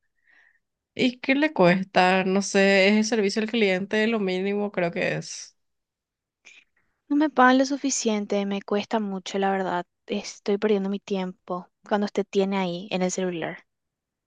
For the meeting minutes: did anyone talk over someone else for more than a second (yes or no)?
no